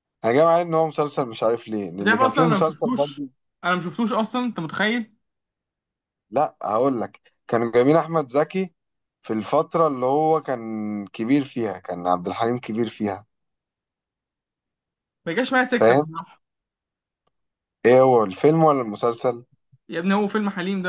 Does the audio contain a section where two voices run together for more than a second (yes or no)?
yes